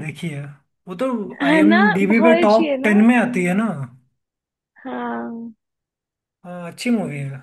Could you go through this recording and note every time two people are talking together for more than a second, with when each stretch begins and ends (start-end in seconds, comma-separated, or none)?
1.4-2.9